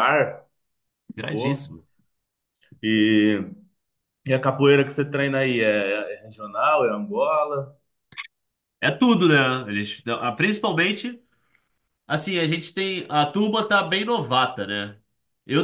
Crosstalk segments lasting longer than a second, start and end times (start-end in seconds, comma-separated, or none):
none